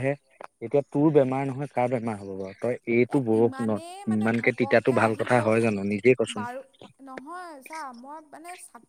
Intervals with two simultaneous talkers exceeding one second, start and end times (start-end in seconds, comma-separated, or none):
3.1-5.5